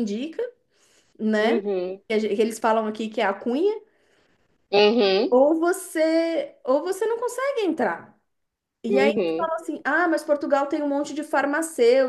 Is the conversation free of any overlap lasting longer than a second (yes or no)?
yes